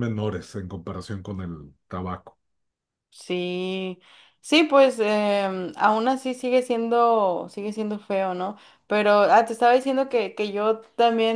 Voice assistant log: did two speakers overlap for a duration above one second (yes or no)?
no